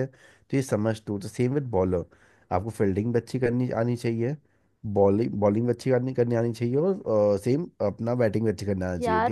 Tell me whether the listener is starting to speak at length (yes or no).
yes